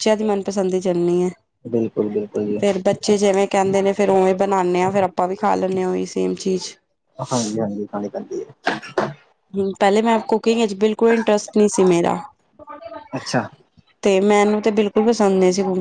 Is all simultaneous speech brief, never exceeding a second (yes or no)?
yes